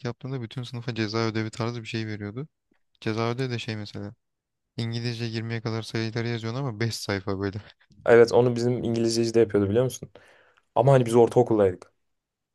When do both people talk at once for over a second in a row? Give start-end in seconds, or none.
none